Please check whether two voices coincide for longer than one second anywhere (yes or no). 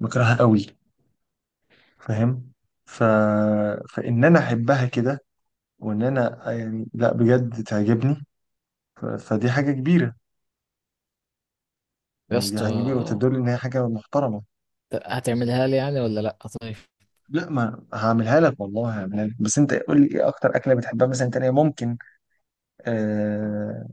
no